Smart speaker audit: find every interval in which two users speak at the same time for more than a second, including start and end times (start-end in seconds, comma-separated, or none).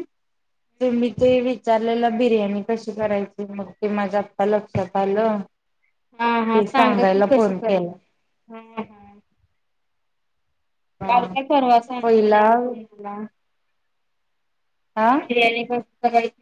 6.5-7.9